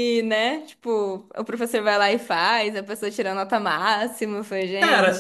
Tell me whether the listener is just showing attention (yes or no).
no